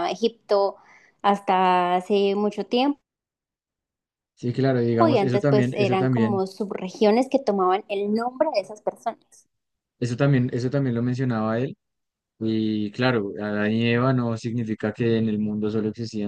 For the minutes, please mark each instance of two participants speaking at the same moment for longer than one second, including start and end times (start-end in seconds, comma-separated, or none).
5.1-6.4